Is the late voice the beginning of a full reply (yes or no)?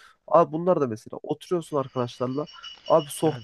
no